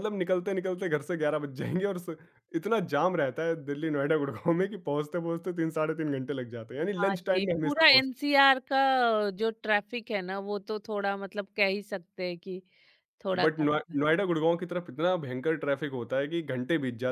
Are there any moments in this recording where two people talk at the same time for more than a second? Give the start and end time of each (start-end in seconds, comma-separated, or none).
7.0-8.2